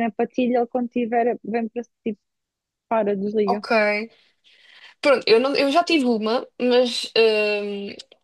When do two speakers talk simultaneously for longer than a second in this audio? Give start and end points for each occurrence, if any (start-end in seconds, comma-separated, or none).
none